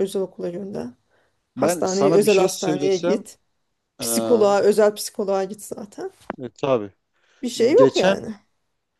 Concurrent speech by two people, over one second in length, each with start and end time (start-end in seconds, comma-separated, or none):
1.6-3.2